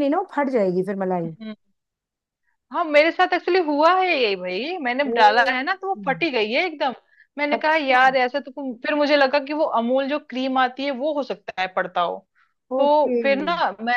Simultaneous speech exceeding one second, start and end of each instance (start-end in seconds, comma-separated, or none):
none